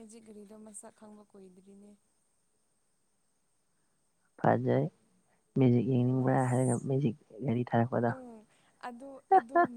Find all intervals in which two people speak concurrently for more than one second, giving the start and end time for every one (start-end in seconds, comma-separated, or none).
none